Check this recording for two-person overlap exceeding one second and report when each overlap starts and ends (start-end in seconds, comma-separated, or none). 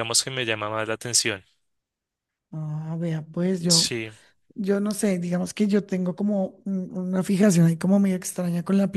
none